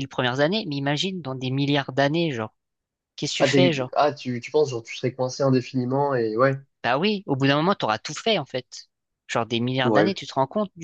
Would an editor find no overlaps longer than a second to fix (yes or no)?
yes